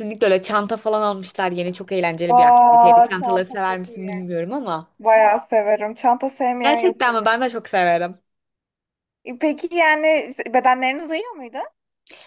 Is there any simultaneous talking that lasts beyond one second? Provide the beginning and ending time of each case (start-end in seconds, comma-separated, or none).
2.3-4.1